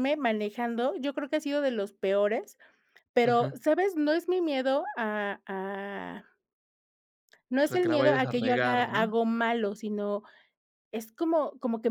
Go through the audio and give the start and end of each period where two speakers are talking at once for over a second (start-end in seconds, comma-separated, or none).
7.7-9.2